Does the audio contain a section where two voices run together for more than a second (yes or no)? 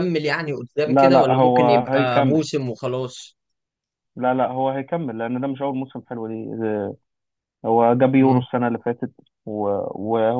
yes